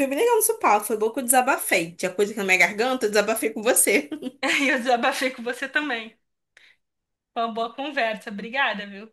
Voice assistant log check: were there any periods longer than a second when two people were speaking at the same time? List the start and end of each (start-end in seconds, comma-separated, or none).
none